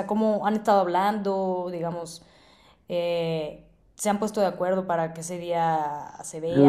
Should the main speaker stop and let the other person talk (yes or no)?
yes